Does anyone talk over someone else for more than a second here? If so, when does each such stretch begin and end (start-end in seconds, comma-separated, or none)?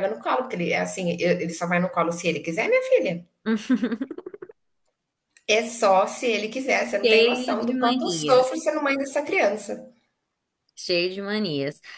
7.0-8.5